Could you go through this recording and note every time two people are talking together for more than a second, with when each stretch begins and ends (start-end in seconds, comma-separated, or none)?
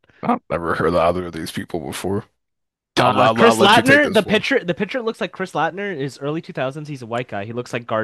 3.0-4.5